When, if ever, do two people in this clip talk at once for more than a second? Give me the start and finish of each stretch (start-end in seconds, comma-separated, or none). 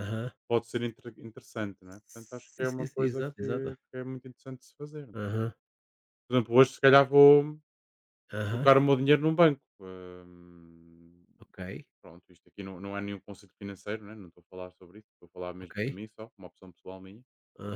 2.0-3.4